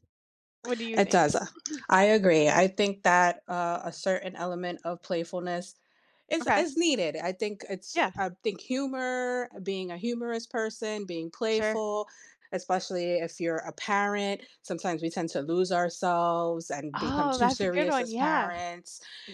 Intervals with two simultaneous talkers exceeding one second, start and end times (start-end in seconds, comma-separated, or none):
16.9-18.5